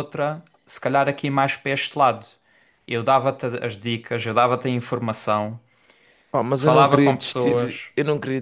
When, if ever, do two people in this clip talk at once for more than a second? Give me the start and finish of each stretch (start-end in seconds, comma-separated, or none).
6.5-7.9